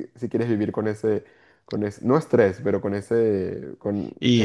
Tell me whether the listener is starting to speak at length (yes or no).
yes